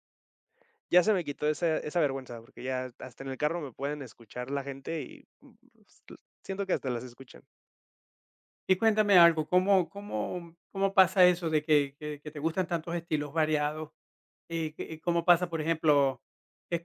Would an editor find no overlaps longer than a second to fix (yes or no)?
yes